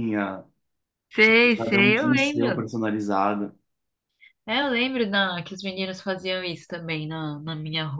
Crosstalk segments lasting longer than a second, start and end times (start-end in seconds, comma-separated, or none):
1.2-2.6